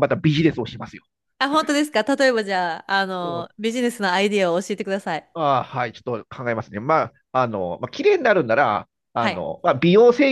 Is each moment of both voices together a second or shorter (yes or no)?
yes